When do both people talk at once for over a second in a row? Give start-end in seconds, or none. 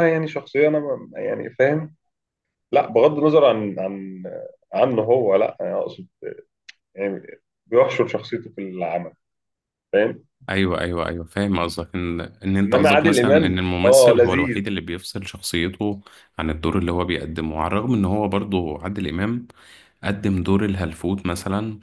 12.6-14.6